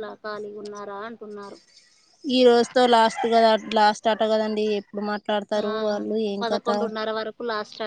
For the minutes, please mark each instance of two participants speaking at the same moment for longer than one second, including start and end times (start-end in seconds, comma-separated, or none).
none